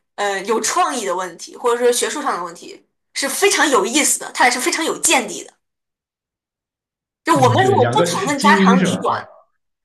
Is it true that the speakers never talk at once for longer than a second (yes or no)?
no